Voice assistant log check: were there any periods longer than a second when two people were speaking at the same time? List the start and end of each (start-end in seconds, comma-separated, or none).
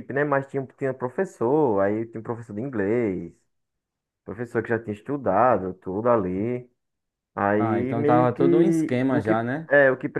7.6-9.7